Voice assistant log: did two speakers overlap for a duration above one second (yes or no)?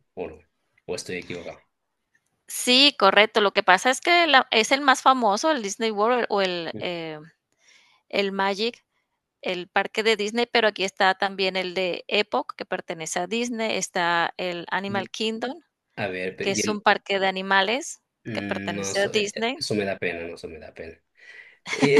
yes